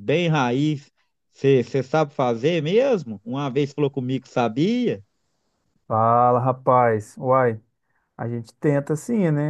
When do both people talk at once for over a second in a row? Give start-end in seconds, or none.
none